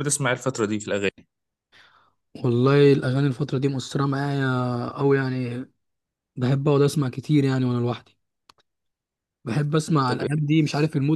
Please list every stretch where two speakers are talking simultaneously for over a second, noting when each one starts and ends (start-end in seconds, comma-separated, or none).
none